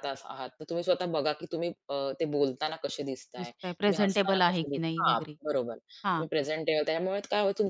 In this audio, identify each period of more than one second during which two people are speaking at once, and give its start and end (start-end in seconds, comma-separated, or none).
3.4-5.4